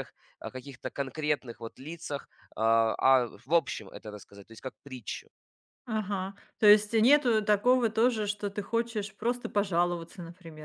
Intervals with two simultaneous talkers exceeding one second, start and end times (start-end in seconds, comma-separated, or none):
none